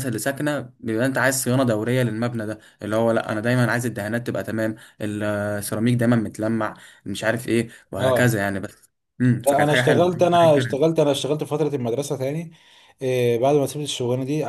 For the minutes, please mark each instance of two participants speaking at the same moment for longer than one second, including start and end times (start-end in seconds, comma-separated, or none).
9.4-10.9